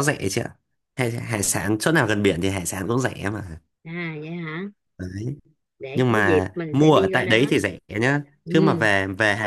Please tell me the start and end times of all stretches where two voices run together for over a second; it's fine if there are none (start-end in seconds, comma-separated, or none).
5.9-7.5